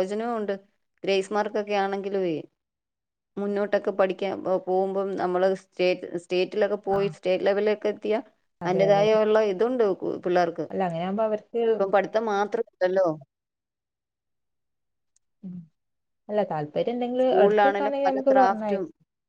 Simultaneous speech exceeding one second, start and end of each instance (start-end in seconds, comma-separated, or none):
17.2-18.8